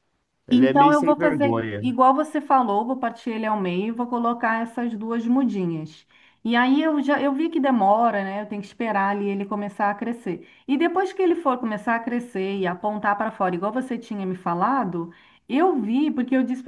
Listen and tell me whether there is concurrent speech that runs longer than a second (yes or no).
yes